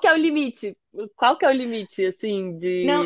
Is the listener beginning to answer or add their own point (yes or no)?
yes